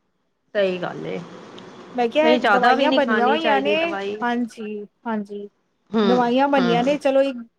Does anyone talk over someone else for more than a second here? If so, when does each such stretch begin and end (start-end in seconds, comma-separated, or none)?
2.2-3.8